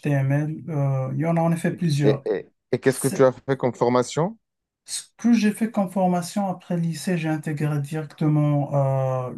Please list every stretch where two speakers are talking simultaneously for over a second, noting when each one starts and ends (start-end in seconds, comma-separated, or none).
none